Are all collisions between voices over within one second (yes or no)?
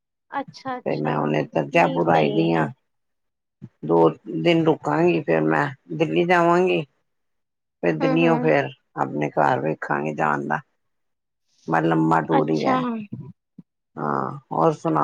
no